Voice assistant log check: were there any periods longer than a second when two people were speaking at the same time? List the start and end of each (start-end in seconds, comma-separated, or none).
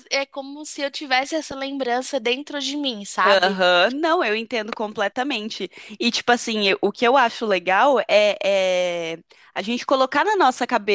none